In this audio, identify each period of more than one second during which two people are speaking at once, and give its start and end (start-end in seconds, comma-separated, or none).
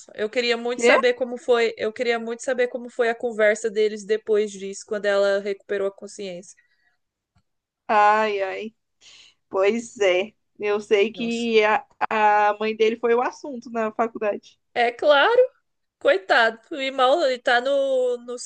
none